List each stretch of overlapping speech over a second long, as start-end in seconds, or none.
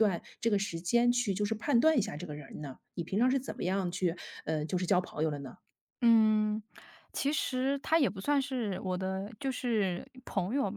none